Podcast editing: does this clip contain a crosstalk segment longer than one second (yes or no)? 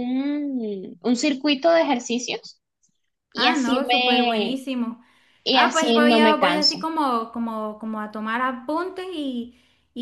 yes